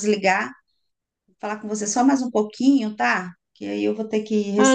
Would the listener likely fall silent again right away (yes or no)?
no